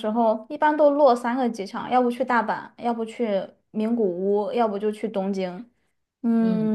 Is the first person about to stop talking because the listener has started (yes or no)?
yes